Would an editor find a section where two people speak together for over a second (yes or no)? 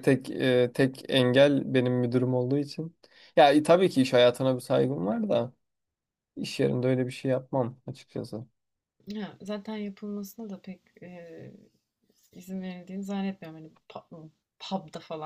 no